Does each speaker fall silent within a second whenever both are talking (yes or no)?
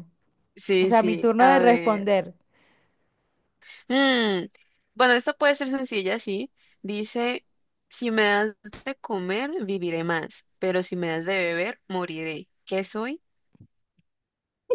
no